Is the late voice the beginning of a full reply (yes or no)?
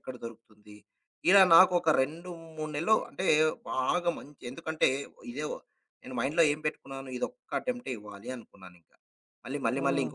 no